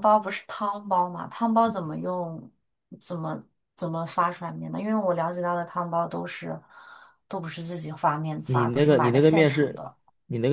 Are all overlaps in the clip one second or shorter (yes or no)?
no